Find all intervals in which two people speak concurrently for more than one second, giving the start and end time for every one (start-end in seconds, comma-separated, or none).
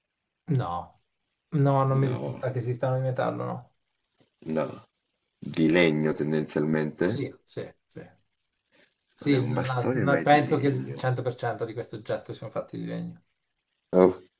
9.2-11.1